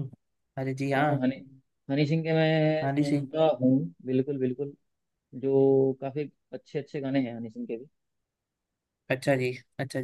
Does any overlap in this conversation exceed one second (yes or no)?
no